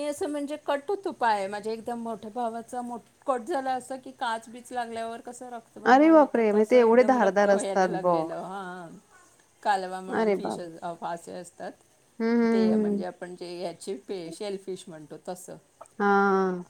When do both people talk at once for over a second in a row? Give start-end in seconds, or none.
5.9-8.3